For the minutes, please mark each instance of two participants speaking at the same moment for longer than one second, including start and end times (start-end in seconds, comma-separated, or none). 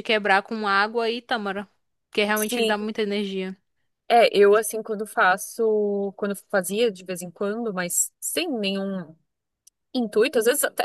none